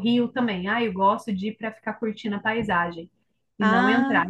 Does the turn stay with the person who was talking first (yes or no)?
yes